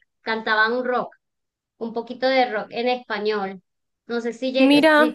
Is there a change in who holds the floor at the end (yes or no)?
no